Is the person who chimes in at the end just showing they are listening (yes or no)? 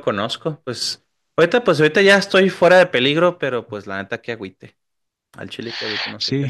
no